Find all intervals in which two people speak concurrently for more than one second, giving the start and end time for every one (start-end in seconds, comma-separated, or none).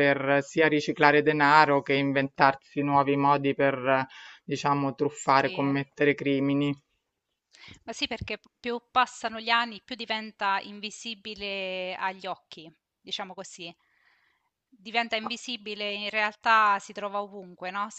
none